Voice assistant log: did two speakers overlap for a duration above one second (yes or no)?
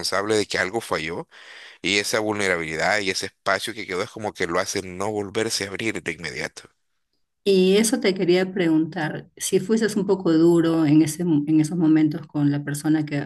no